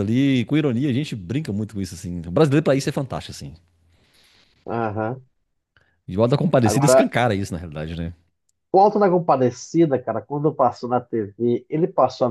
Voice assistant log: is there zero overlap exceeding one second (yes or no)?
yes